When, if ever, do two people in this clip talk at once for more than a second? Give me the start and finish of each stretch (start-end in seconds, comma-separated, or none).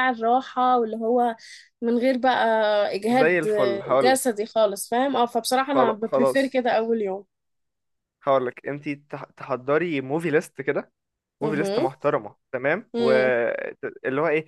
none